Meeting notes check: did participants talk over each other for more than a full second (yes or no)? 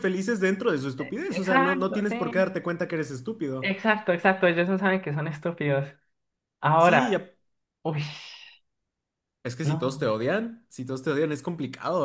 yes